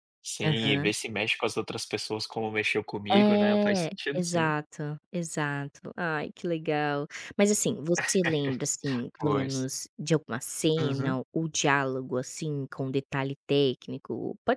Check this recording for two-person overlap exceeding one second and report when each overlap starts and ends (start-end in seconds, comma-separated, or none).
3.1-4.5